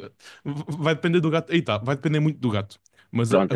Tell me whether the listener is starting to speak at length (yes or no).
no